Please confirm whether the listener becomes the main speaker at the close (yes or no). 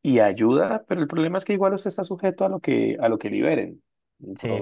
yes